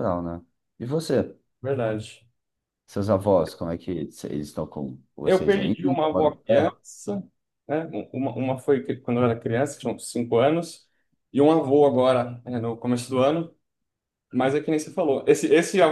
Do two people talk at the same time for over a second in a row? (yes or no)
yes